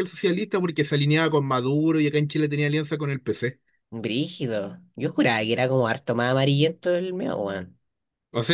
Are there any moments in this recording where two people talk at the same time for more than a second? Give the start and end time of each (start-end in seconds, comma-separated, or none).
none